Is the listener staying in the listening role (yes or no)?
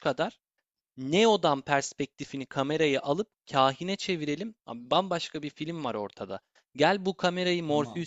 yes